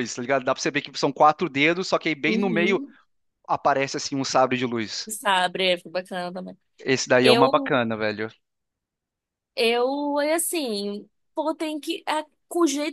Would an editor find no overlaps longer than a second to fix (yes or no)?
yes